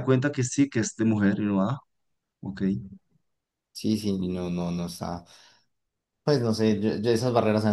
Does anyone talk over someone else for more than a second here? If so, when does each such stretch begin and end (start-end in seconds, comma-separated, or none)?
none